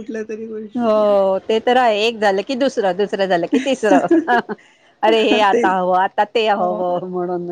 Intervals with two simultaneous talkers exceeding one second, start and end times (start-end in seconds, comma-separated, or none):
none